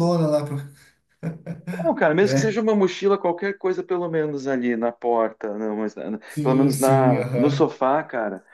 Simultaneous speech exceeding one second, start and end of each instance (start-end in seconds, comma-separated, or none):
6.3-7.7